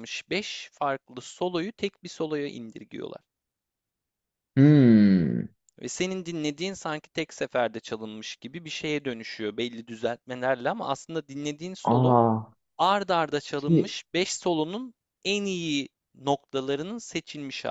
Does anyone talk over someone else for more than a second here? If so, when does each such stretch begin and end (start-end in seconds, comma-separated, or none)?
none